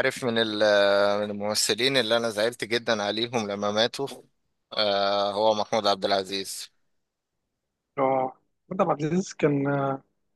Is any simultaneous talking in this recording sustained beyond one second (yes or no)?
no